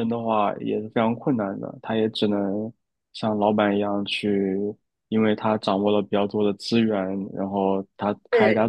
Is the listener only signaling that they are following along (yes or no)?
yes